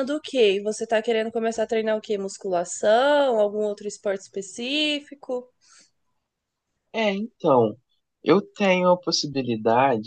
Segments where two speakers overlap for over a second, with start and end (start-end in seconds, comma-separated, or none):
none